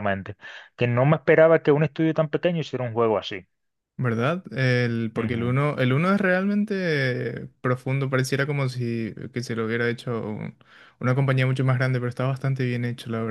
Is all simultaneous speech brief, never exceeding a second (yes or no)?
yes